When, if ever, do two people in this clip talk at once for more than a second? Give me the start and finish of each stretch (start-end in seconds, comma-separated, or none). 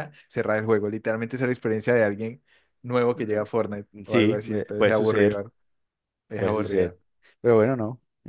4.1-5.4